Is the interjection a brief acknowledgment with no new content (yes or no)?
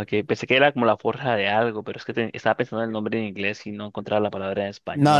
no